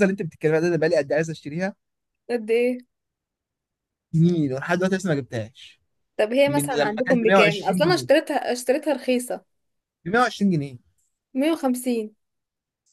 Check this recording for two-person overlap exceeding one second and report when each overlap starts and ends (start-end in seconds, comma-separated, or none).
6.5-8.1